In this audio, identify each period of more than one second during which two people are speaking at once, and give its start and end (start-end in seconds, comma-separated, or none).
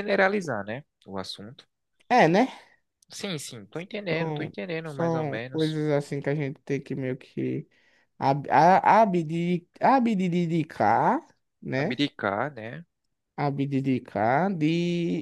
4.1-5.8